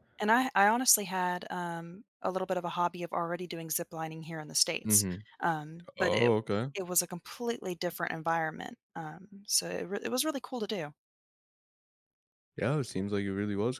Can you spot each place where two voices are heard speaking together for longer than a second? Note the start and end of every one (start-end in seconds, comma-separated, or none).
none